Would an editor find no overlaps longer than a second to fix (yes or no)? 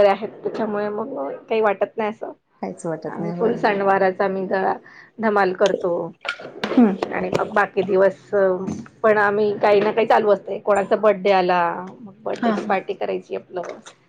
yes